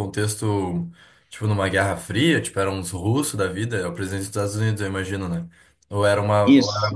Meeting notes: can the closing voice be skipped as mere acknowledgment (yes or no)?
yes